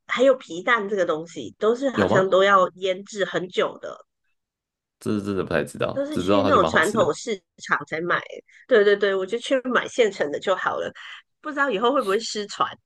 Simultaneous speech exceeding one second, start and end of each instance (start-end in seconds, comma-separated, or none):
5.9-7.2